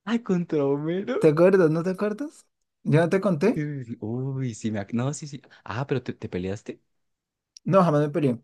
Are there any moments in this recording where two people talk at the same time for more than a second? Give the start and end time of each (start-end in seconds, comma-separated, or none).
none